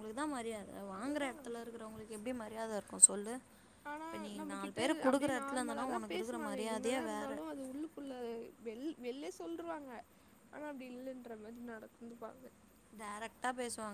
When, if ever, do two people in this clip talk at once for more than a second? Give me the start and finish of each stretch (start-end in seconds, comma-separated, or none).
4.0-7.3